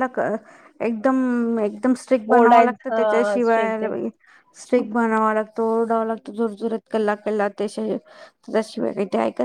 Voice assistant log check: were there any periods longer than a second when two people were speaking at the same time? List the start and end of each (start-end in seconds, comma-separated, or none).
2.4-3.9